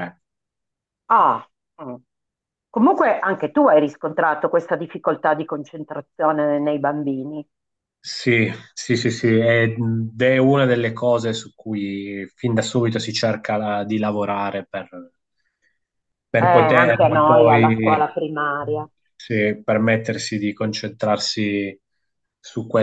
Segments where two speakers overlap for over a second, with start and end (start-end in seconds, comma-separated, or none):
16.4-18.1